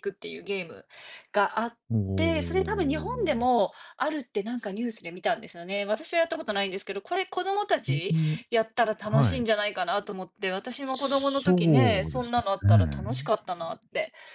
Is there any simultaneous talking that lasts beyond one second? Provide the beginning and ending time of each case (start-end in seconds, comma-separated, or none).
2.1-3.6, 10.8-12.3